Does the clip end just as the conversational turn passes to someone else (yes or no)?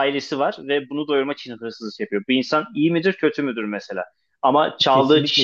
no